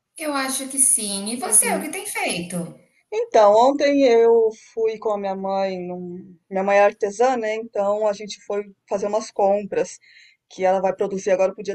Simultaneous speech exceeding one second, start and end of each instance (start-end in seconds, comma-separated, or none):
none